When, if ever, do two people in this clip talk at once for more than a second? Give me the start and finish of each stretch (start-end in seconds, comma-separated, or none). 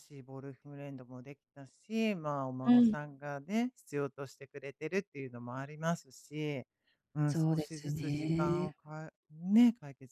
7.3-8.7